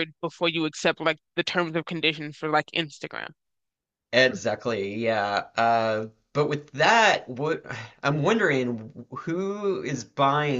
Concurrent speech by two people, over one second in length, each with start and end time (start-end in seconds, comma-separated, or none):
none